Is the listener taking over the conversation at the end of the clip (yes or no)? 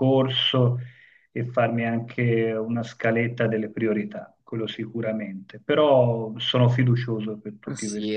yes